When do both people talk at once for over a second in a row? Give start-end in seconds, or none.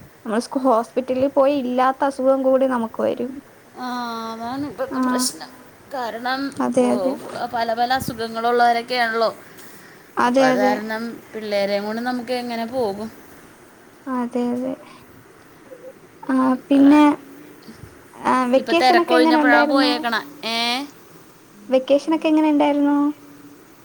18.6-19.9